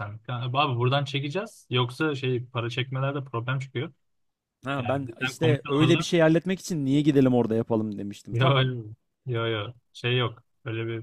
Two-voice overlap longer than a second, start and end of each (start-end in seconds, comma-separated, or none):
4.8-6.1